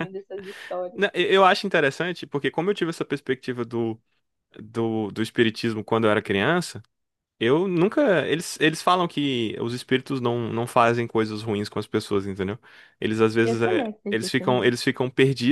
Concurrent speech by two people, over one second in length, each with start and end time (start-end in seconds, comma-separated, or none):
13.4-14.7